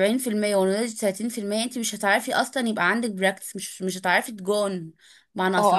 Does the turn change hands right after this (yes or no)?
yes